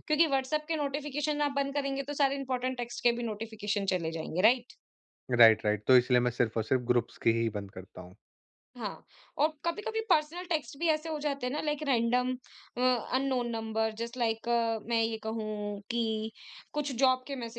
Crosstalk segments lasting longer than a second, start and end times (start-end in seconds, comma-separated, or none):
none